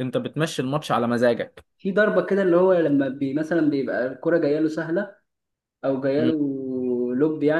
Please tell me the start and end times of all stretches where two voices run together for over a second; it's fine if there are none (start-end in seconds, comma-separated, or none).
none